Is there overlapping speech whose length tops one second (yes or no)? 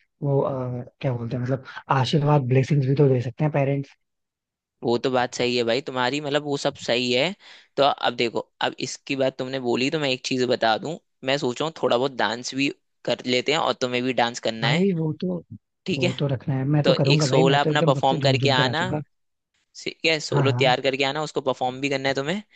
yes